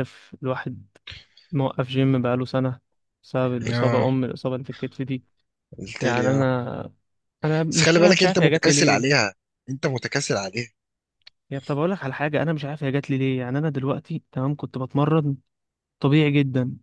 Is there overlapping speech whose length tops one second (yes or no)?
yes